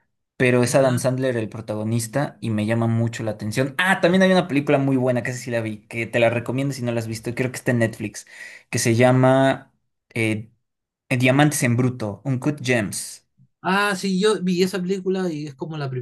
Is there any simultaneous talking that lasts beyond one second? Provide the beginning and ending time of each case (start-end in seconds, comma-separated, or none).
none